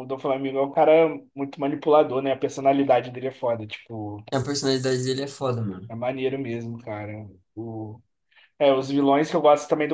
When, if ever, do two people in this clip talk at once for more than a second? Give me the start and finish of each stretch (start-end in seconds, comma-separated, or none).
none